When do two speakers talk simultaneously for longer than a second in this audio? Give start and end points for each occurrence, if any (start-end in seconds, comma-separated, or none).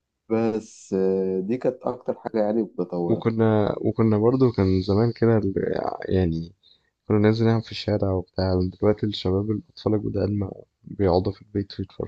none